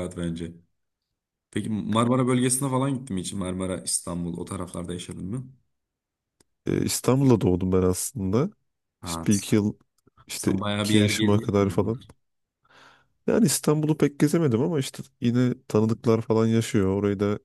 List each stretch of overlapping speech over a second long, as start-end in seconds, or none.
10.3-11.9